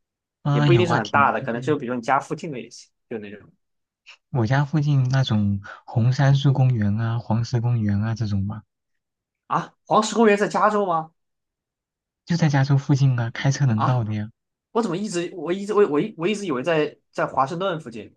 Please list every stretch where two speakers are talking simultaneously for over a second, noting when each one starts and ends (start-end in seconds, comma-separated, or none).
0.5-1.8